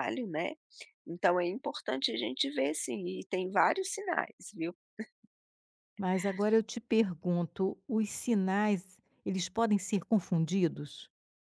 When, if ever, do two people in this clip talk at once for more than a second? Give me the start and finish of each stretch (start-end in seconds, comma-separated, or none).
none